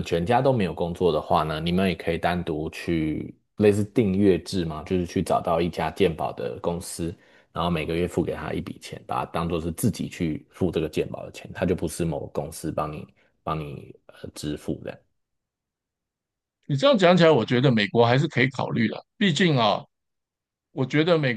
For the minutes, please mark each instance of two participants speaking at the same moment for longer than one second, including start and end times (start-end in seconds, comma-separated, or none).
none